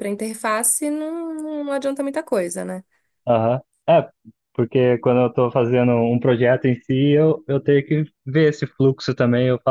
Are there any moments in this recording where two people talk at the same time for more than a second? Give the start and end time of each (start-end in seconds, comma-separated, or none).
none